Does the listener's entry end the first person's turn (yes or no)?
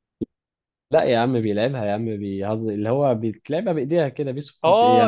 yes